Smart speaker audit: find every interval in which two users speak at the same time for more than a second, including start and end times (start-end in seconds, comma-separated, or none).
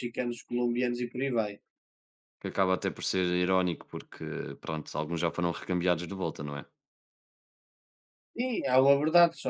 none